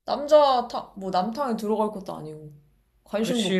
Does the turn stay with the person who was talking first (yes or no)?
no